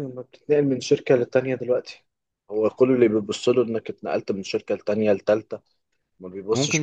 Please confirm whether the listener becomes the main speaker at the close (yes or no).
yes